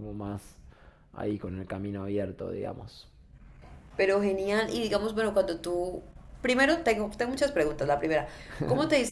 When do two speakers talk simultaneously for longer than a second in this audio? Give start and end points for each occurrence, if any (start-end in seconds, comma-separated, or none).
none